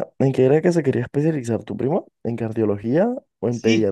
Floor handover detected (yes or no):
yes